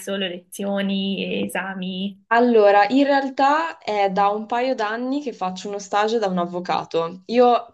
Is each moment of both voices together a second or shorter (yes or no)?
yes